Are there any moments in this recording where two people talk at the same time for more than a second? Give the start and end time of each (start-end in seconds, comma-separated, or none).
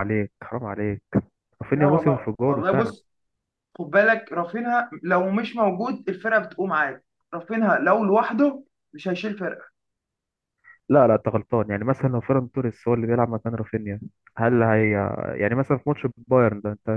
1.7-2.9